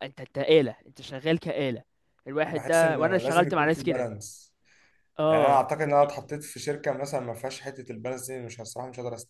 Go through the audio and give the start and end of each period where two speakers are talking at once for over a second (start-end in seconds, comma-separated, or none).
2.5-4.1